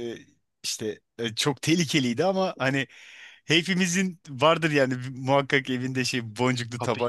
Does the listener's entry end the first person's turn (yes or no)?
yes